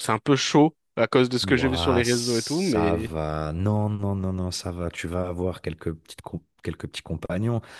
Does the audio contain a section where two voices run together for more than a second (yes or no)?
yes